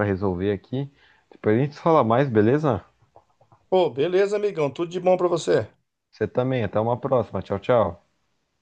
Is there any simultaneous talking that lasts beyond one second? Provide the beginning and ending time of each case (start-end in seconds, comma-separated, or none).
none